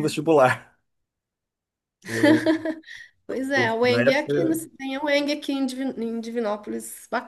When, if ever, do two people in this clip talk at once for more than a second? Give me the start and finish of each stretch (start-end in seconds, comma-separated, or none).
3.3-4.6